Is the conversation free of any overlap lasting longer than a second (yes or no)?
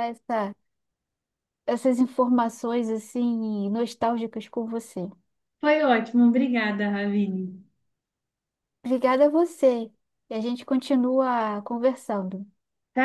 yes